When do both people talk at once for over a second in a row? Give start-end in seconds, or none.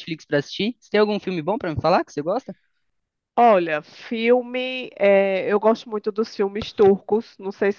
none